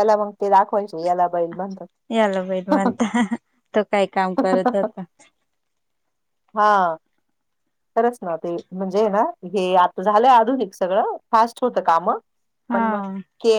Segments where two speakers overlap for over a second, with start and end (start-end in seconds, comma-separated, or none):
none